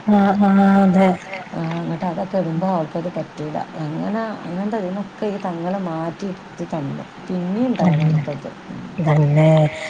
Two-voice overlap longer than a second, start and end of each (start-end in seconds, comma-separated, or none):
none